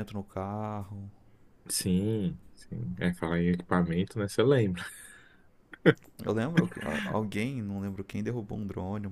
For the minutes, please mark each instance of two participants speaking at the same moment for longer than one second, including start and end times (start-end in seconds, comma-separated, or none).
none